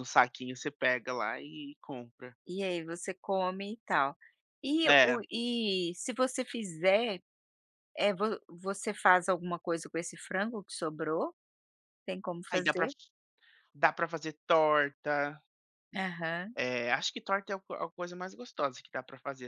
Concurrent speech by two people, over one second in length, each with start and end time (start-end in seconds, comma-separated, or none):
none